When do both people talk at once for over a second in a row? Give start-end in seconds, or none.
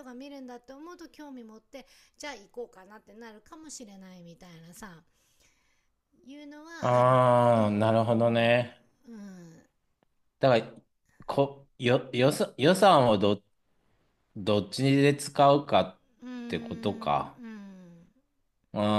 6.8-8.6